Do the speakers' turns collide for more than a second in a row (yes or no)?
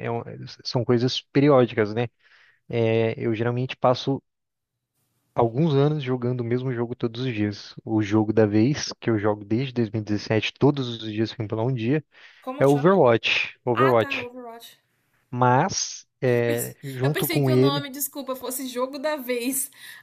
yes